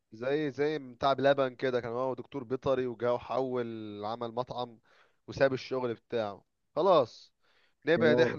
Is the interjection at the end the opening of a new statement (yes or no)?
no